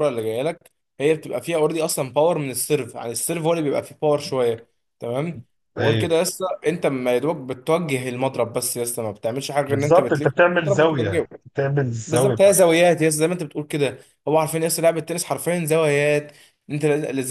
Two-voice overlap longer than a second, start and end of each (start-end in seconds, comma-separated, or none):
9.7-11.3